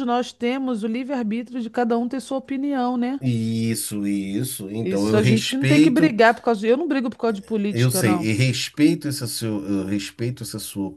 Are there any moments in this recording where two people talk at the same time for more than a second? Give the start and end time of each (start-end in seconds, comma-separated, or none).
4.8-6.2